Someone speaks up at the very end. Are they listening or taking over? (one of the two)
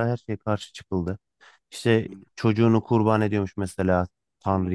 listening